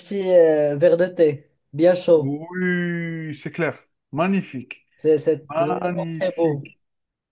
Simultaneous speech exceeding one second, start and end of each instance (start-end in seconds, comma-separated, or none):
5.5-6.7